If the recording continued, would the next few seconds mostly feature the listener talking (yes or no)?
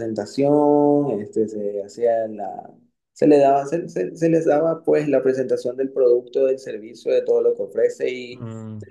no